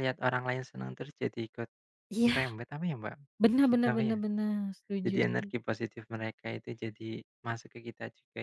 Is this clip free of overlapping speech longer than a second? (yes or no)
yes